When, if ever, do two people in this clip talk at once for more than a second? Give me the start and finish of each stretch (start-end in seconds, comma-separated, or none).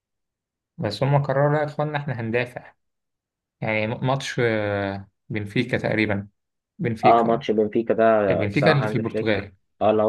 8.3-9.5